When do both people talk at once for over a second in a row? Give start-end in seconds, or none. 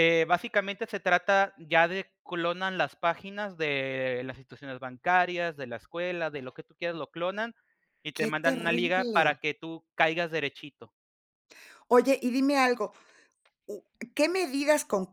8.2-9.4